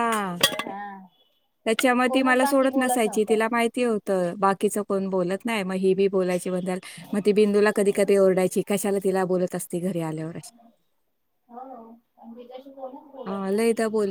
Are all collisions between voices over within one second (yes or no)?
no